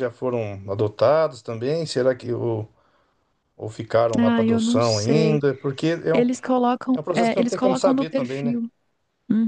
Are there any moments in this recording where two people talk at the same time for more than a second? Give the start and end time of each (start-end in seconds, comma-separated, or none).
4.2-5.4, 6.9-8.6